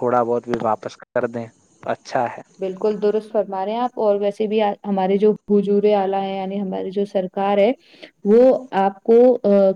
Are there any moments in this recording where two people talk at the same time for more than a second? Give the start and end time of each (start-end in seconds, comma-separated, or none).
none